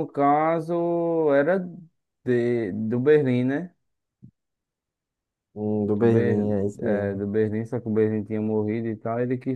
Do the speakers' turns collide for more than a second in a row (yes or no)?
yes